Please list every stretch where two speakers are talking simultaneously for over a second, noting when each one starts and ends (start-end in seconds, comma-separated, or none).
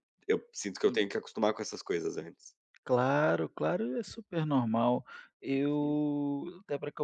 none